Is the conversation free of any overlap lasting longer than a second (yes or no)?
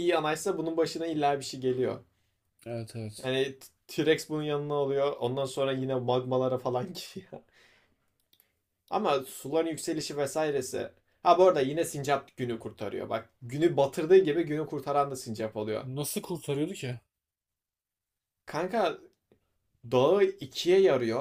yes